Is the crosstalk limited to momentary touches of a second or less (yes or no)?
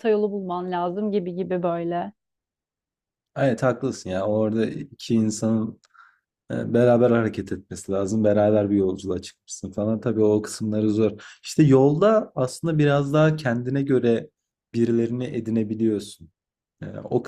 yes